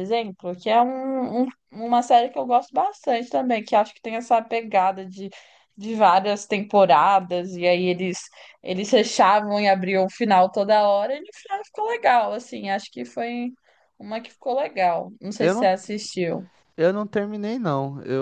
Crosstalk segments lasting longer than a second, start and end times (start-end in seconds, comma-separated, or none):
none